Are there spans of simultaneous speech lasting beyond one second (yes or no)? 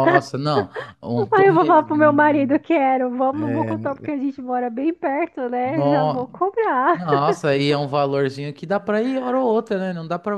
yes